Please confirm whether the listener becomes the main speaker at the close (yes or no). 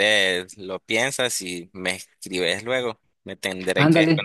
yes